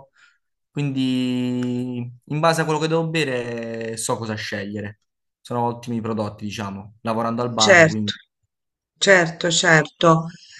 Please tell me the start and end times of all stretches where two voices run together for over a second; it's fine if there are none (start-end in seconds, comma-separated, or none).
none